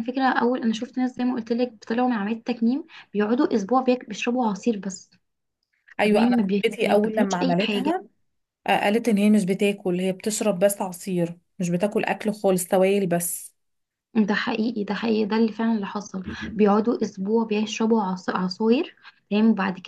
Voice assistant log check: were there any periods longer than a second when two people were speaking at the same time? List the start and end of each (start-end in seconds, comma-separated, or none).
6.0-7.9